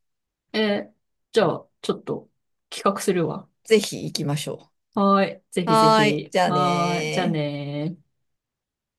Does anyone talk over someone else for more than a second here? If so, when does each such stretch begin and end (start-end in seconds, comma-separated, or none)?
5.7-7.5